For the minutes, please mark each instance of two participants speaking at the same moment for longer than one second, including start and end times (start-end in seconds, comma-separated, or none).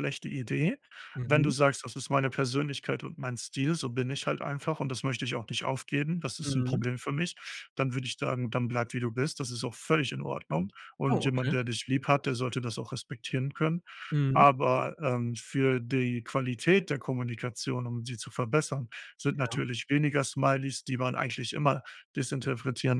none